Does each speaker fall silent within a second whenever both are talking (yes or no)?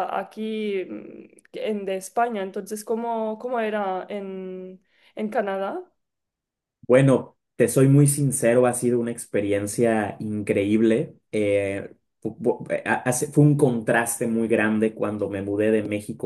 yes